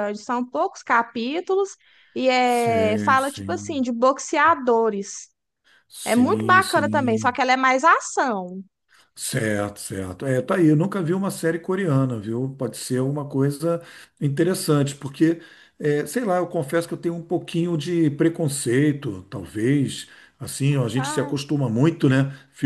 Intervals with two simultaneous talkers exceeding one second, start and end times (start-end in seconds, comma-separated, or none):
2.4-3.8, 6.0-7.5